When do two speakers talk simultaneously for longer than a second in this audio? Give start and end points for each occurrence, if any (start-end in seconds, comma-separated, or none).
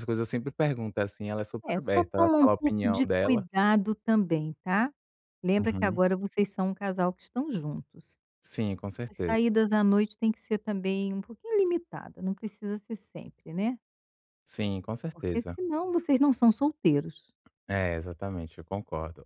1.7-3.5